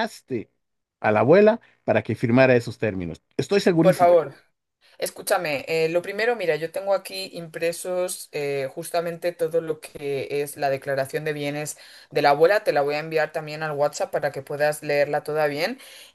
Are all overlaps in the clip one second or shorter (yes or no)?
yes